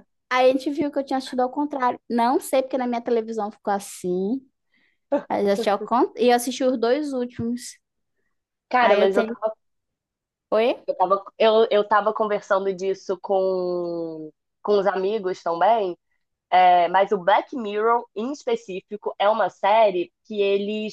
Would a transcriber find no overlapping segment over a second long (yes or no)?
yes